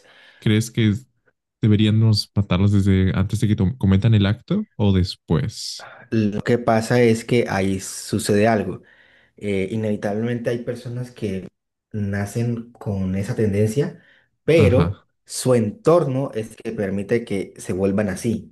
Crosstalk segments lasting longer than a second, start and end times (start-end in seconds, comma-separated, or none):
none